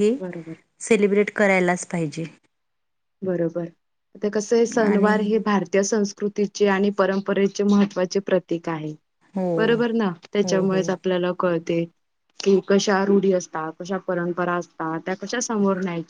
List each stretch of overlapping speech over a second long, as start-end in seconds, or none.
none